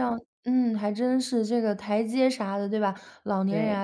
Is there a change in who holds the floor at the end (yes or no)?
no